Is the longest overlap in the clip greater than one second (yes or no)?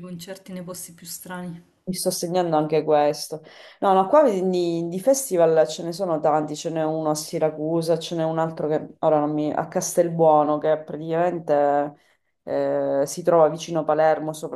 no